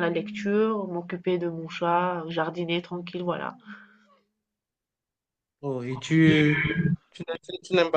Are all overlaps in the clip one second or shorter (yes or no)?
yes